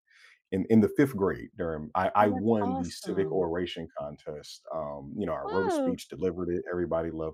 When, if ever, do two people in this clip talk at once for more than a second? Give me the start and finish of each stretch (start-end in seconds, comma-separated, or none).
2.2-3.5